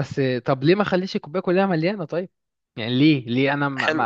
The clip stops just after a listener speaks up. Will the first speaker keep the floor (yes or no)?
no